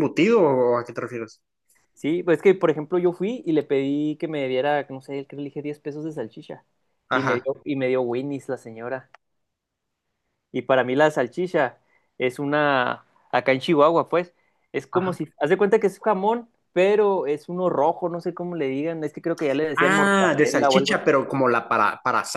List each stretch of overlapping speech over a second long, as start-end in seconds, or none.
19.8-21.1